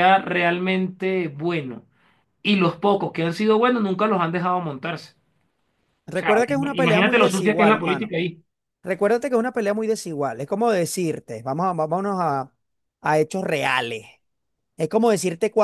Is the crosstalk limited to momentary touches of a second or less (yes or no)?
no